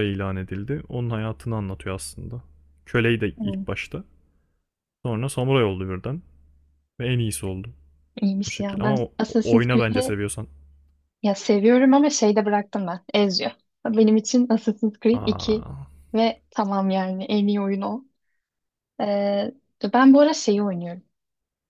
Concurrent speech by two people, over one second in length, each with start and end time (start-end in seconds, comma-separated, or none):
8.5-10.2